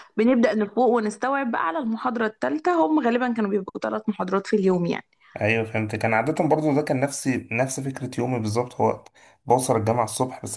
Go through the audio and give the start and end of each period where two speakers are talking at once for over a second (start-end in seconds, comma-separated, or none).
none